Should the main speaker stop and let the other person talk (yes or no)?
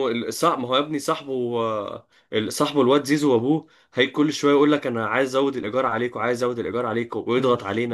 yes